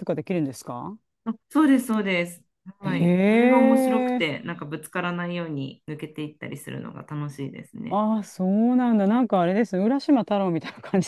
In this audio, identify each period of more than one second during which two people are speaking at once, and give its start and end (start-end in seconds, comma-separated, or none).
2.8-4.4